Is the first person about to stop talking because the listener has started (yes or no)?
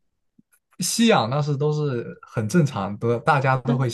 no